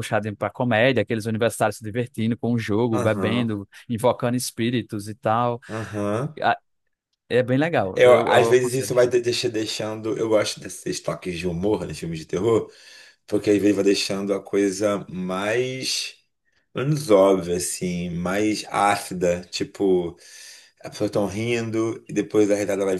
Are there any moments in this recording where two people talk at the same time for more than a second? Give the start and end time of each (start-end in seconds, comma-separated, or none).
8.0-9.2